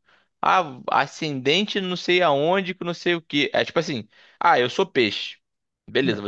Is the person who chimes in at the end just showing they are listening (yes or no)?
yes